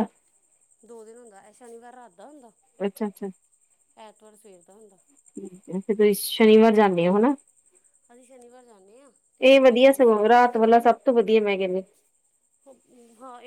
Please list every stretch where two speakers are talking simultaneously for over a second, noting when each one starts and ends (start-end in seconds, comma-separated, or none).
none